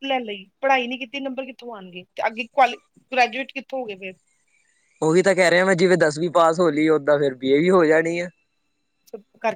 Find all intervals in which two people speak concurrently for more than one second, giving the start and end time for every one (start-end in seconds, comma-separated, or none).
none